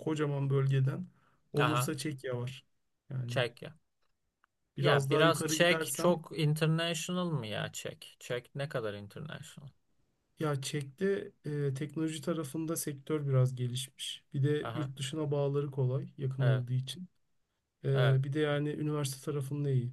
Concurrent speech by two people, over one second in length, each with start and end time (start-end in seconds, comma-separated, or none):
4.8-6.1